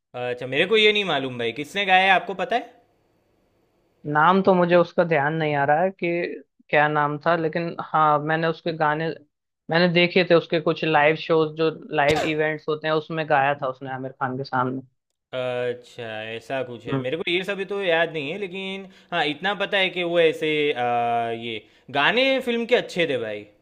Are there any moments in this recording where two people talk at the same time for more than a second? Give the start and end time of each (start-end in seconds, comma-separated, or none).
none